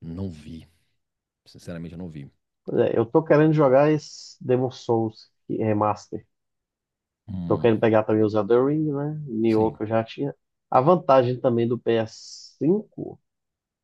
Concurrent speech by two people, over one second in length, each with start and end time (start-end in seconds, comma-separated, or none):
none